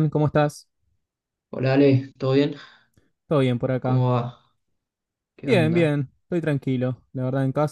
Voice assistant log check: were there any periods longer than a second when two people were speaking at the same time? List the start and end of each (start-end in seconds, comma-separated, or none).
none